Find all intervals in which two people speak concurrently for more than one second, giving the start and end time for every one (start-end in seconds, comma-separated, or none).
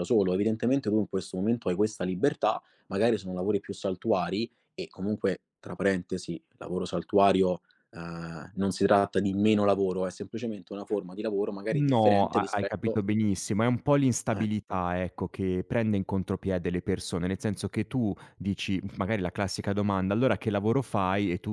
11.7-13.0